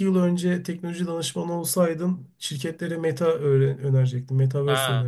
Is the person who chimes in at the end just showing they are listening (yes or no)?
no